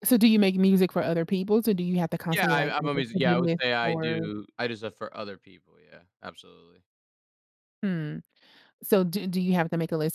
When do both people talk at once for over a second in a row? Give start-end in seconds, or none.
2.3-4.2